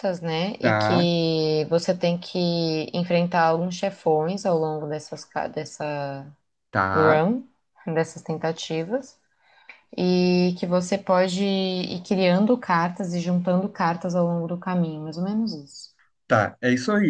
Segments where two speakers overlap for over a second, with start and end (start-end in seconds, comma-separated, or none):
none